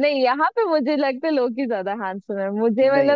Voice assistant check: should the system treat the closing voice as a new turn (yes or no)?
no